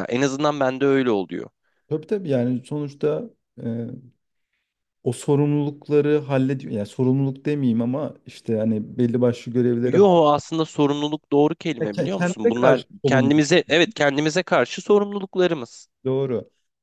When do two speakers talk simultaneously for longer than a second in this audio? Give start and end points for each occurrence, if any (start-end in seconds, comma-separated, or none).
11.8-13.6